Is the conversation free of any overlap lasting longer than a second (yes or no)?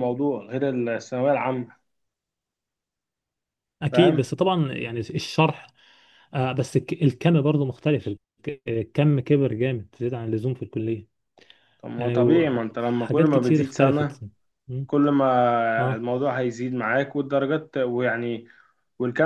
no